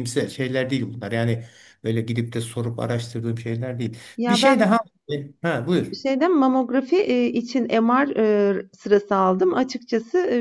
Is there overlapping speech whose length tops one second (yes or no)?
no